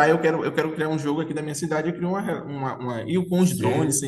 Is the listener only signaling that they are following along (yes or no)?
yes